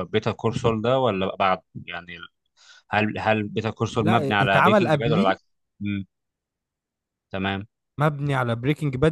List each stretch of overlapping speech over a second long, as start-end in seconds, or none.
4.0-5.5